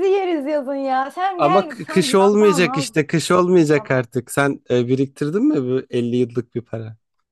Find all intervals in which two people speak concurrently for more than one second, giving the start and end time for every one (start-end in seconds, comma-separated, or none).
1.4-3.1